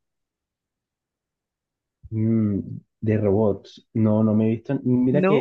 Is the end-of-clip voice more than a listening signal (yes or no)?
no